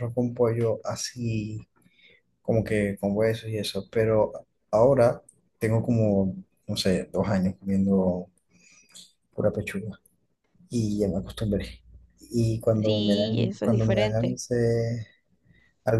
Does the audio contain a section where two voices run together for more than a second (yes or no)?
yes